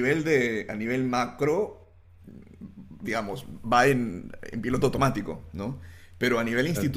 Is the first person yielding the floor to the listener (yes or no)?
no